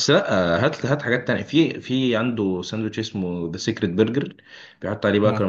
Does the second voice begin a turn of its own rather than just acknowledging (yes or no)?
no